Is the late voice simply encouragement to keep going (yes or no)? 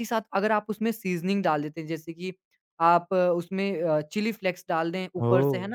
yes